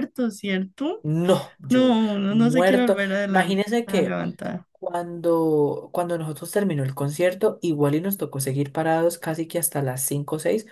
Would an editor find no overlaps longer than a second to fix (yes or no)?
no